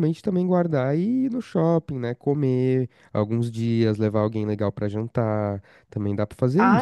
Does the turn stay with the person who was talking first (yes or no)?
no